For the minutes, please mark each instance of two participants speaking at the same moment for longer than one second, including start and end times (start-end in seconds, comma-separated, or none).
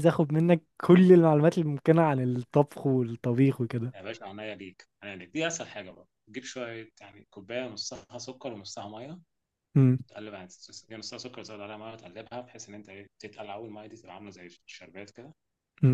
none